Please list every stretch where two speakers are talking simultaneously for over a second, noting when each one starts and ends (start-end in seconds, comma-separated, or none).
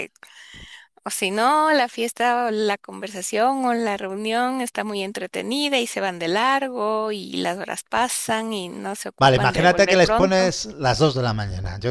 9.2-10.5